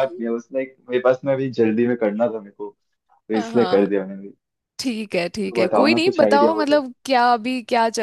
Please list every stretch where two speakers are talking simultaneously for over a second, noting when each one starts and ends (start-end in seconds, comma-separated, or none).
5.5-6.8